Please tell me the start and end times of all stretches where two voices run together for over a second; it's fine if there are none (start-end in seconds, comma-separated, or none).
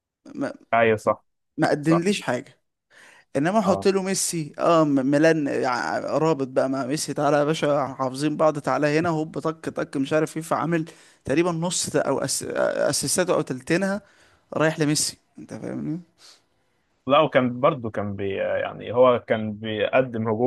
none